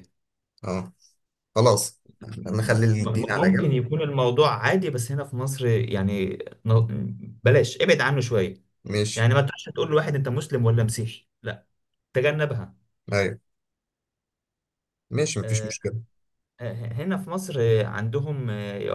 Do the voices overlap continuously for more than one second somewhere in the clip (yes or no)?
yes